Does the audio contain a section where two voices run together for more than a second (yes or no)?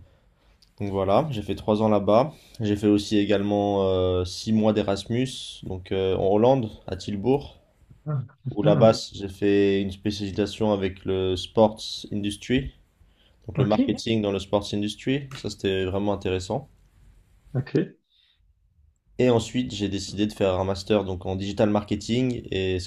no